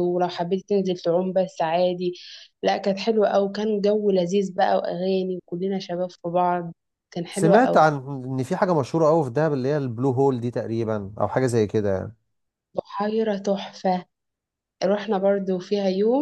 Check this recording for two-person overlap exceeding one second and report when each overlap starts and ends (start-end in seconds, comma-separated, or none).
none